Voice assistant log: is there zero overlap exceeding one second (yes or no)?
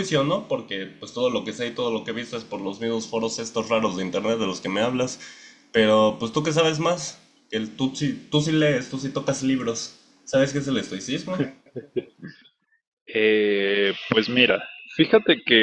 yes